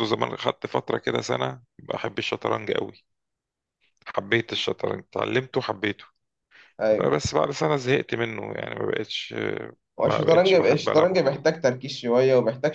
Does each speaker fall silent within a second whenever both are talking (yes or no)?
no